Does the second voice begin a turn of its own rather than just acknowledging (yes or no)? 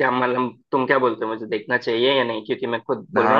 yes